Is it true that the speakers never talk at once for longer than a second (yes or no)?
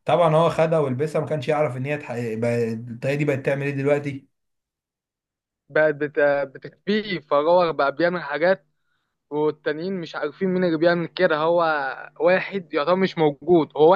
yes